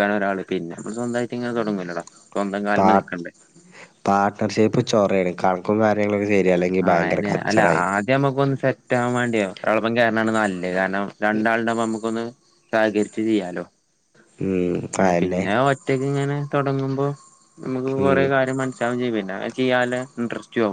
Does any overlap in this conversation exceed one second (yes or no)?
no